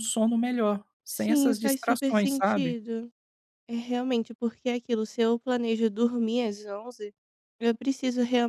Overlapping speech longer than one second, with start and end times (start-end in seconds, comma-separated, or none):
1.1-2.8